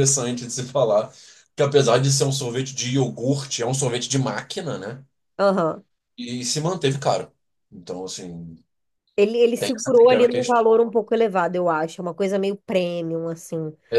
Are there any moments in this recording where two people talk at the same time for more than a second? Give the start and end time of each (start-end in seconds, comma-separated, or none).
9.6-10.9